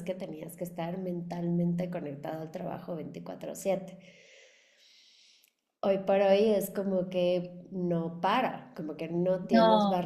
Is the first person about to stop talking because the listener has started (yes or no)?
no